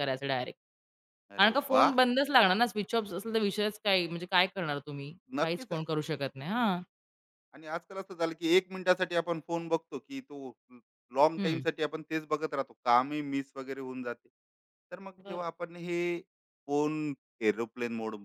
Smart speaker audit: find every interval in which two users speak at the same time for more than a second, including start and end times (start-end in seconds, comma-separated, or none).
none